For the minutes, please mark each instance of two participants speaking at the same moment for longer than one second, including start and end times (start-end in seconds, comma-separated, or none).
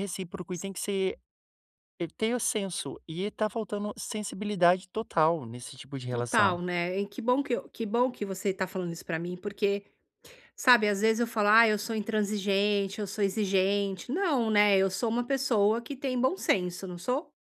none